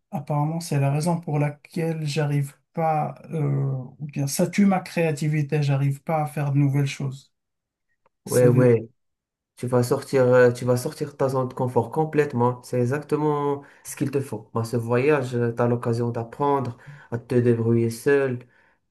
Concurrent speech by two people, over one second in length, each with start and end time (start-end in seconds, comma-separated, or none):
none